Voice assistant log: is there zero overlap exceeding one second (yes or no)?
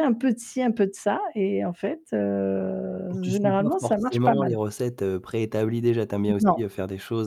no